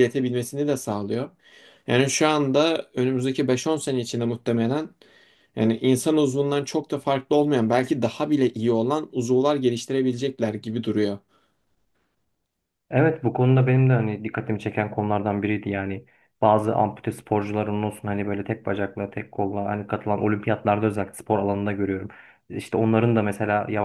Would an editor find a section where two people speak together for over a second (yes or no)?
no